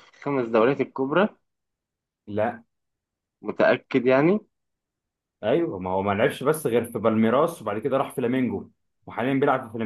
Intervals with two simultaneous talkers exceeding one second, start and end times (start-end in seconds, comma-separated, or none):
none